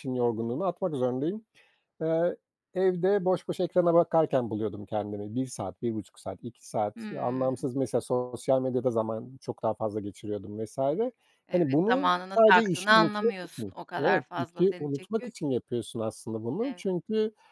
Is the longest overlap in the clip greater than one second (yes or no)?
yes